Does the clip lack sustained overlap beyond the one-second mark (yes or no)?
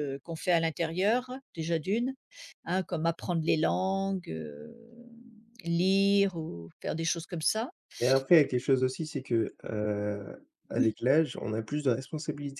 yes